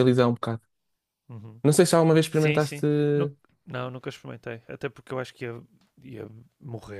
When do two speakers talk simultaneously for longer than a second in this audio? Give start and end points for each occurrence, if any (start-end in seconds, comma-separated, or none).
none